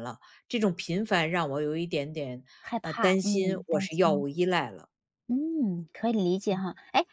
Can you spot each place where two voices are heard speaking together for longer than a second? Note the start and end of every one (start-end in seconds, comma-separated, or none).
2.8-4.2